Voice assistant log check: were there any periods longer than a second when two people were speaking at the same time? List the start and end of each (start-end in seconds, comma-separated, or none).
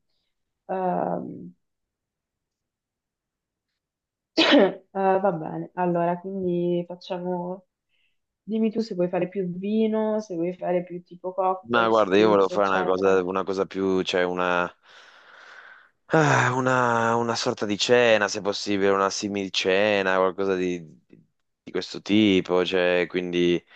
11.7-13.3